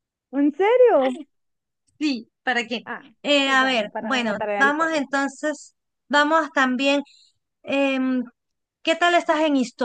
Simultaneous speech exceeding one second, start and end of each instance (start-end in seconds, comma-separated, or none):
3.5-5.0